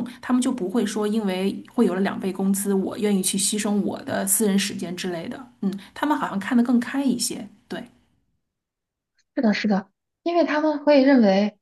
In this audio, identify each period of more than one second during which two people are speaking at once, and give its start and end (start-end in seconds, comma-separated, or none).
none